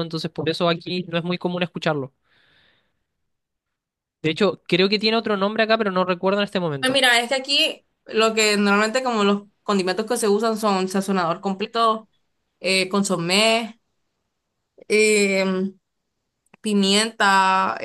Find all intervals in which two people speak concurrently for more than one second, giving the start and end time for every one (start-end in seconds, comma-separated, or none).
none